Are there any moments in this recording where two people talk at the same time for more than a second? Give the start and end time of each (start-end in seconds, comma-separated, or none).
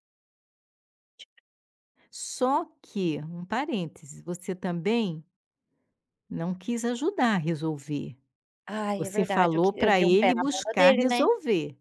9.0-11.2